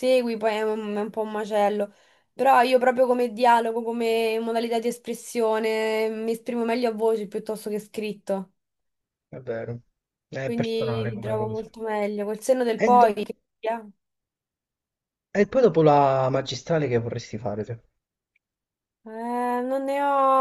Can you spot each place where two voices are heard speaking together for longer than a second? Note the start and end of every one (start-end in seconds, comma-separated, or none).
10.4-11.7